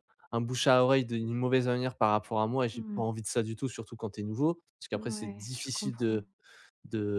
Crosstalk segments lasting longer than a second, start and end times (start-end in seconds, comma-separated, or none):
4.9-6.2